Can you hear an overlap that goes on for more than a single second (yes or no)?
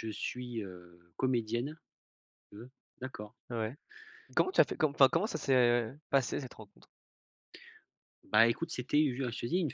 no